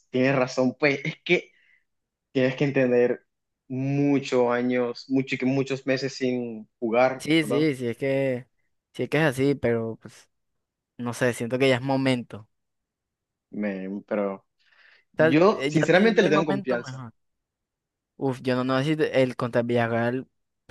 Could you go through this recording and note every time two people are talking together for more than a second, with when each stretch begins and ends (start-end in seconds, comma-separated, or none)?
15.2-17.0